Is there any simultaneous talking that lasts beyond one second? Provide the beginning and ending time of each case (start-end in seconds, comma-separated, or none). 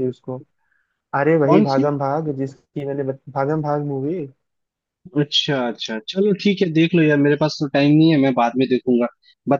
none